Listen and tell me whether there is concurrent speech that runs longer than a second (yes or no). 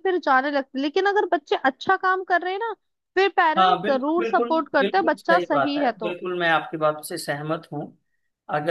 yes